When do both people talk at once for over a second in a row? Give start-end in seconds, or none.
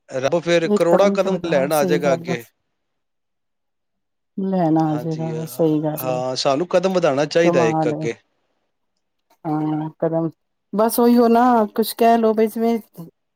0.8-2.4